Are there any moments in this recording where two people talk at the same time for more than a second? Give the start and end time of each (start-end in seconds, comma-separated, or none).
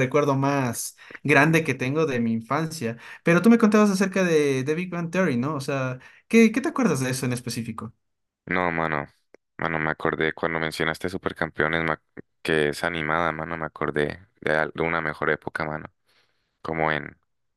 none